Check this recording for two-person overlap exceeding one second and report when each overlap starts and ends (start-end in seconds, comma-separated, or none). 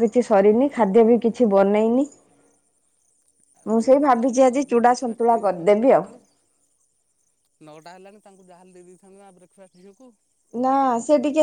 3.7-6.1